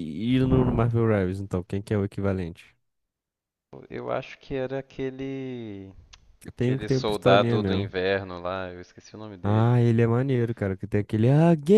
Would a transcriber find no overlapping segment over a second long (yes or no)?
no